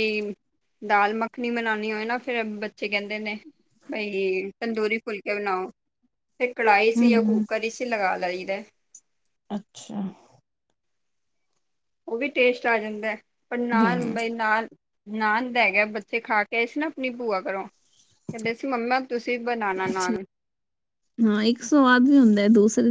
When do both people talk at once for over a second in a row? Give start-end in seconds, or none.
none